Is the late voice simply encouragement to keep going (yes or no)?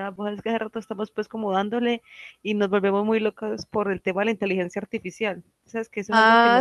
no